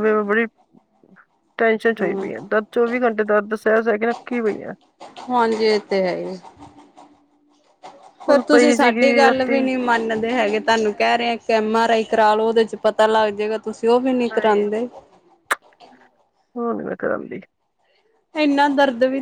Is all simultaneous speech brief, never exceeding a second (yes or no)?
no